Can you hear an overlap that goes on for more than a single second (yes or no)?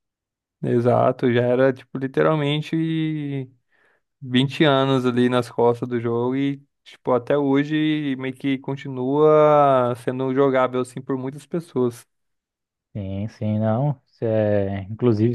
no